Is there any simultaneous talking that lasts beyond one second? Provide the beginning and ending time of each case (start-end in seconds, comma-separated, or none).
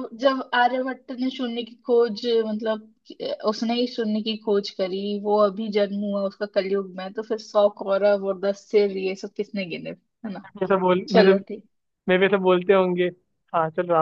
none